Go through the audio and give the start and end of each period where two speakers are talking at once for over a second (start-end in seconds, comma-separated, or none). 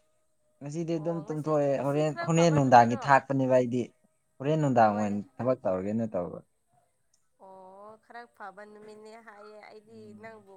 0.9-3.2